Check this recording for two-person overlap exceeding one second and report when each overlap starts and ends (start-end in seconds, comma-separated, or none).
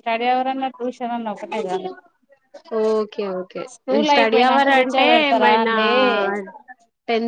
4.1-5.8